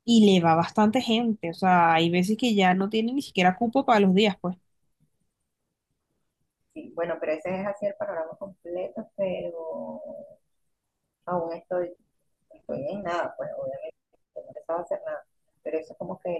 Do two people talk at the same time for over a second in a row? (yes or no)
no